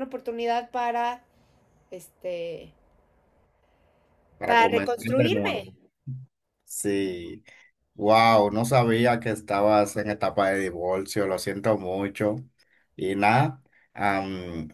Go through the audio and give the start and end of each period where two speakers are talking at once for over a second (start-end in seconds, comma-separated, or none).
4.5-5.7